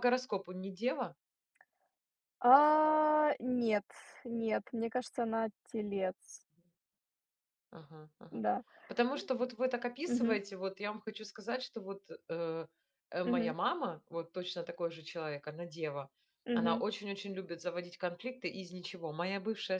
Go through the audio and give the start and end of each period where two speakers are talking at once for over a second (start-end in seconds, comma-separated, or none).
none